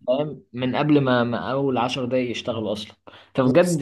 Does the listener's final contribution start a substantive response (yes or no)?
no